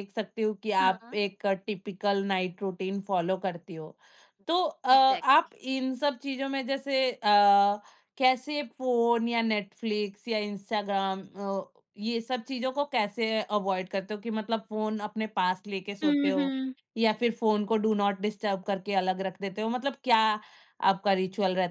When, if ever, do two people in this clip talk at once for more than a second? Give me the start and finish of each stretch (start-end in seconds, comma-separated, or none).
none